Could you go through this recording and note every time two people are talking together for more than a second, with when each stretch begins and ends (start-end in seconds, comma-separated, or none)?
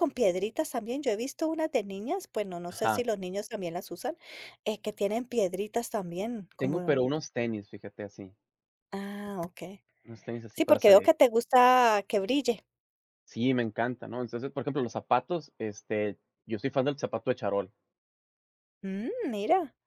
none